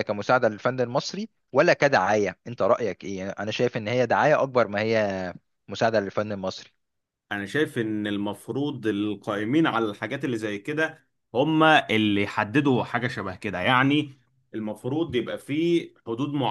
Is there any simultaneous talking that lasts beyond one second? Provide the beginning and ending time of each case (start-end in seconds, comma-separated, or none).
none